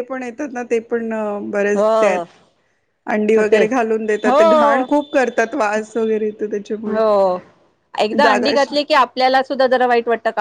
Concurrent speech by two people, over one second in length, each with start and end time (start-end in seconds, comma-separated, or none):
none